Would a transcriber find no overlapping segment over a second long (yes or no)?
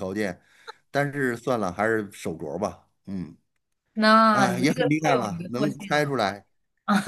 no